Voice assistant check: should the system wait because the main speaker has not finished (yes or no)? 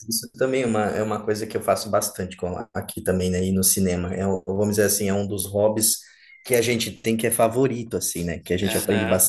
yes